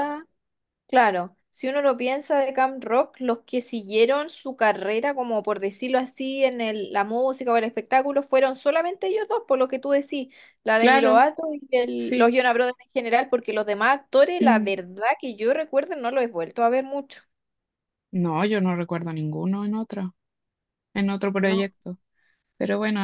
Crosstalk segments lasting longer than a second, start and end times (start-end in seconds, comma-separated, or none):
none